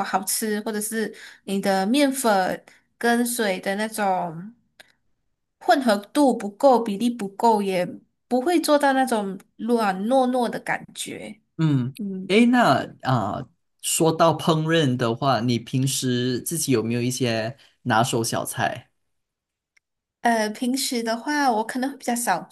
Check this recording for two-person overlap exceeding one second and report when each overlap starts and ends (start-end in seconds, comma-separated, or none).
none